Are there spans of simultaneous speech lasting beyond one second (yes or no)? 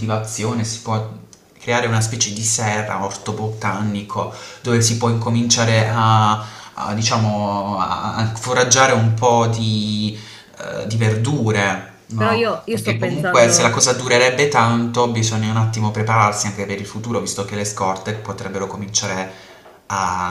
yes